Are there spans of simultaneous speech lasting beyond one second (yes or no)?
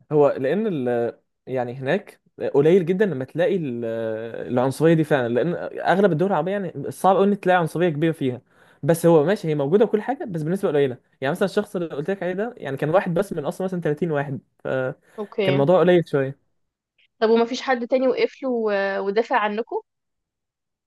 no